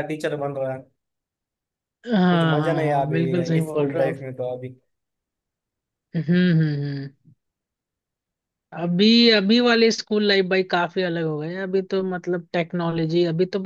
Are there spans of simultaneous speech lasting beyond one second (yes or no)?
yes